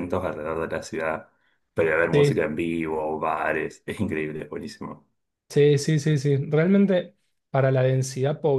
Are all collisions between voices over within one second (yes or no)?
yes